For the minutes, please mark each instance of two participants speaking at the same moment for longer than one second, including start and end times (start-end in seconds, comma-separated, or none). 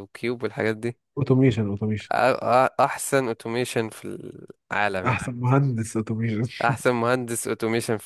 none